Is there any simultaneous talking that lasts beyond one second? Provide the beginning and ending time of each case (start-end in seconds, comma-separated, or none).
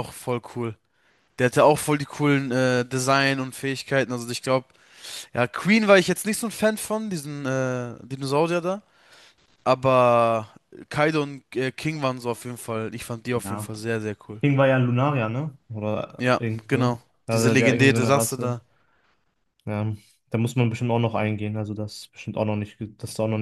16.2-18.6